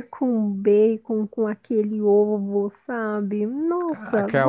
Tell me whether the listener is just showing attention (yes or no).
no